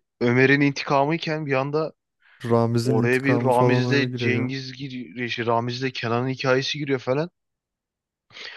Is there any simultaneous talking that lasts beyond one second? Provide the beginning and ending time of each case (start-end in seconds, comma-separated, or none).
2.8-4.5